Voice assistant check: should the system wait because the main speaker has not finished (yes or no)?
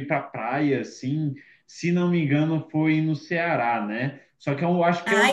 yes